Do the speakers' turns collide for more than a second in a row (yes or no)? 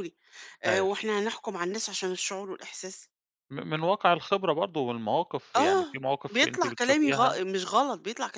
yes